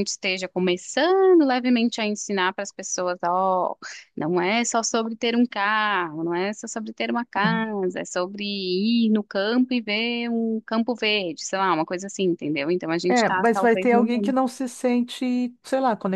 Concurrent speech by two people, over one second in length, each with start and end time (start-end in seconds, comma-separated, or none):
13.1-14.3